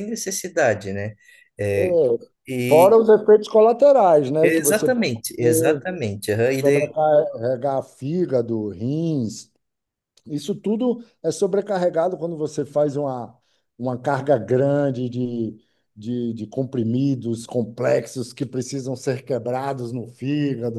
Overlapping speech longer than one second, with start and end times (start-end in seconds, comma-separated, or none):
4.4-5.8